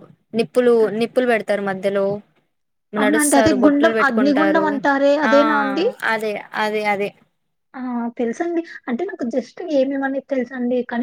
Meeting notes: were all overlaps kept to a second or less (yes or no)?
no